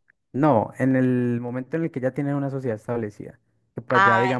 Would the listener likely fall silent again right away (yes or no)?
yes